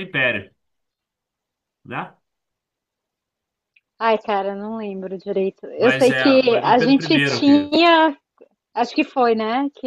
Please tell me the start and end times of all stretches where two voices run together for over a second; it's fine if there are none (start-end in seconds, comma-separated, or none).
5.8-7.7